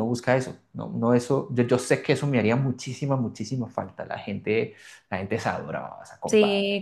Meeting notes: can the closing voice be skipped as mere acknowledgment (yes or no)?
no